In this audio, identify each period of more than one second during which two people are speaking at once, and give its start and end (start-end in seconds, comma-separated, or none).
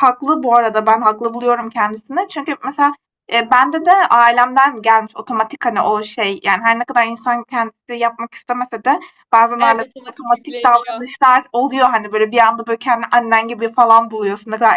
9.6-11.1